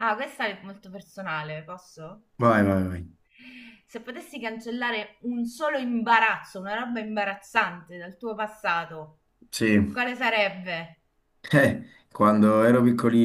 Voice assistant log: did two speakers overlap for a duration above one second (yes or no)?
no